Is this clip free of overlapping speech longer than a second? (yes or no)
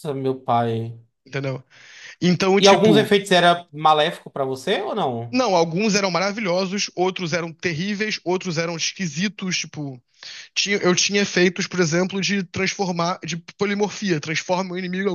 yes